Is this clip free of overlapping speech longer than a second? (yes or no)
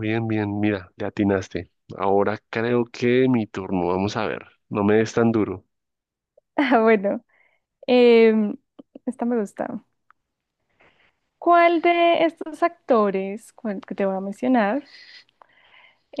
yes